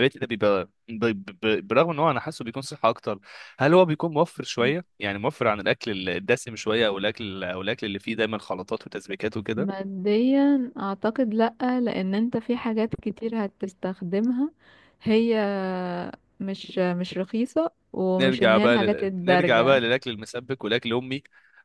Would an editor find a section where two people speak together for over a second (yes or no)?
yes